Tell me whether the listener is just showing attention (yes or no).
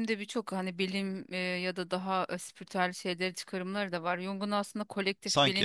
yes